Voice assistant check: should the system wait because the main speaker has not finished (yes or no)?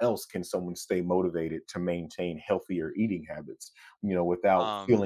yes